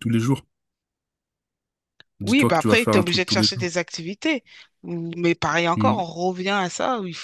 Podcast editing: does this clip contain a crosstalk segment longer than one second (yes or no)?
yes